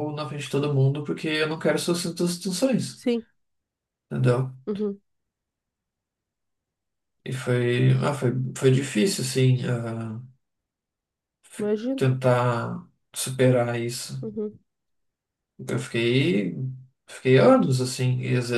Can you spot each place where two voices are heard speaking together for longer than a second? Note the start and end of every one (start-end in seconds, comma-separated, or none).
none